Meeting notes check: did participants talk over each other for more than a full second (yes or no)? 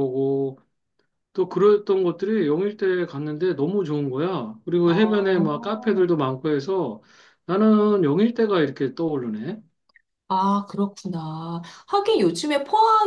yes